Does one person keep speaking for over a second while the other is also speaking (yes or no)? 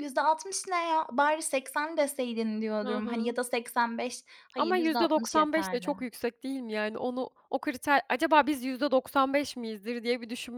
yes